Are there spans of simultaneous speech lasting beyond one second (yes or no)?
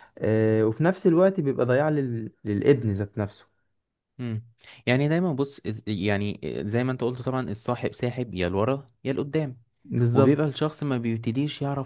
no